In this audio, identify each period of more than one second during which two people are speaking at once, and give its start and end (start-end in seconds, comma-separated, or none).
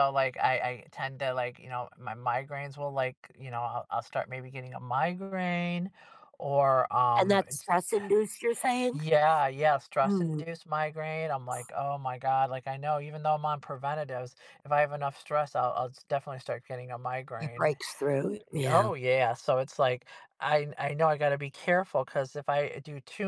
none